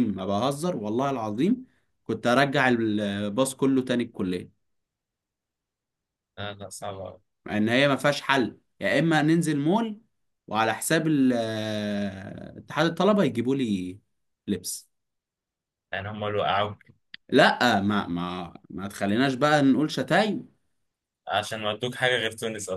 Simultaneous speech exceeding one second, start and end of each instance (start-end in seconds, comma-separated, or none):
none